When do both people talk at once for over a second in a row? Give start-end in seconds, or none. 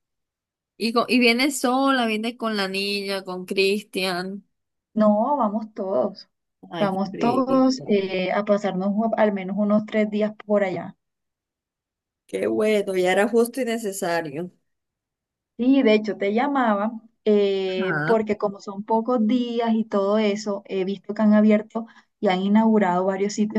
6.8-8.0